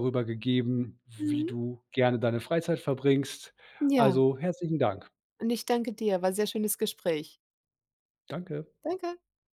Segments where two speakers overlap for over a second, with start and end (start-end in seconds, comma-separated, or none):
none